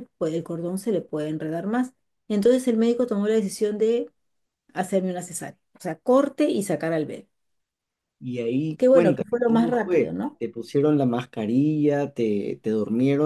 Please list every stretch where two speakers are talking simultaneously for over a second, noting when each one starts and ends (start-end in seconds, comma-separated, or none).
8.8-10.4